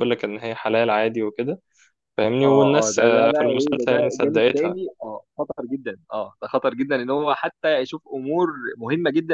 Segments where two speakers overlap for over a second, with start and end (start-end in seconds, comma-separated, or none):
2.4-4.8